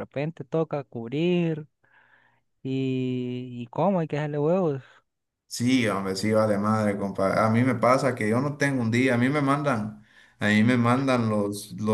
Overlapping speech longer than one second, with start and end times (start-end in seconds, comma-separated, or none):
none